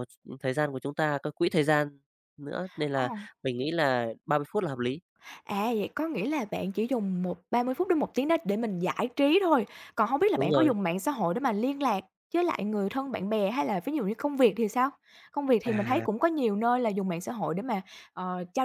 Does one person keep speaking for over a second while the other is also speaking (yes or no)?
no